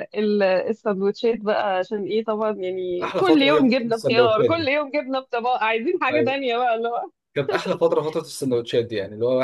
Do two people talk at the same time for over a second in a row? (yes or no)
yes